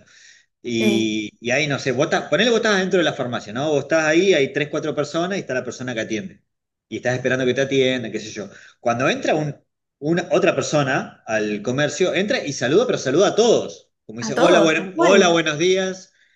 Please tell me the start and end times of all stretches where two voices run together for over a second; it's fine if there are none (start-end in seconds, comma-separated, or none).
14.2-15.4